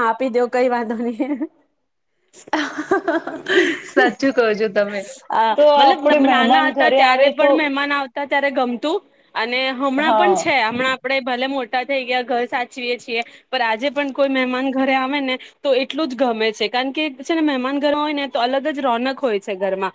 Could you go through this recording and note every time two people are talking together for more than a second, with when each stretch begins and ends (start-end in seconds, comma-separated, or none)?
5.5-7.5